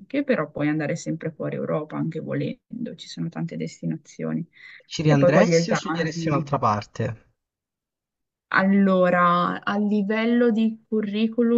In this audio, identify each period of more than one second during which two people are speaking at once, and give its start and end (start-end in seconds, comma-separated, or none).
5.0-6.5